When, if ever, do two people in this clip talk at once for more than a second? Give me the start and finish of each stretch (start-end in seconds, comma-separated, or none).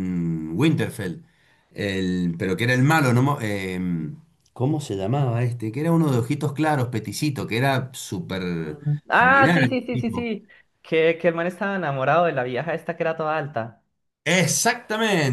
8.6-10.3